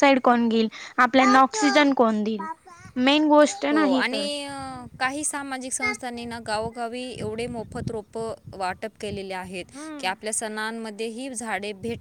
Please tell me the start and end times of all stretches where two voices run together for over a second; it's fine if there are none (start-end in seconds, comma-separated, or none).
none